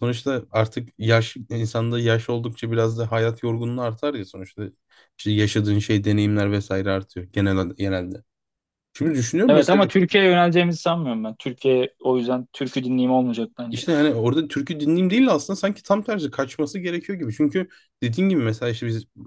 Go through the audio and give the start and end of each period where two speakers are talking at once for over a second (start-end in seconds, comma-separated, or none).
none